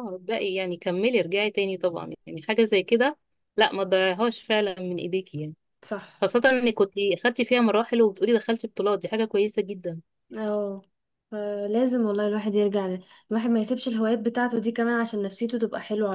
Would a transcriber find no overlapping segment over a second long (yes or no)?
yes